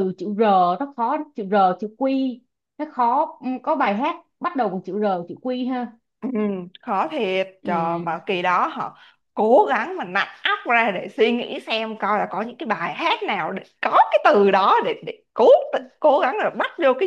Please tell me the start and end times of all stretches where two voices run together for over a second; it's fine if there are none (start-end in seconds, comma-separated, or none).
none